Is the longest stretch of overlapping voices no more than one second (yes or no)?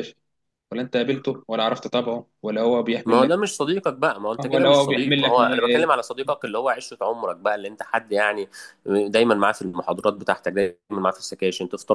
no